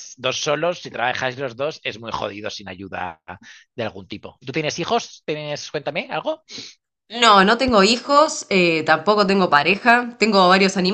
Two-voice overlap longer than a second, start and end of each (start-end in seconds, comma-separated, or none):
none